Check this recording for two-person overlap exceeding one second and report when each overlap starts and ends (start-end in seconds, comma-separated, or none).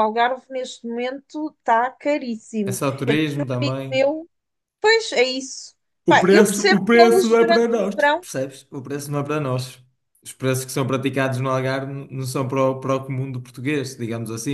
6.0-8.3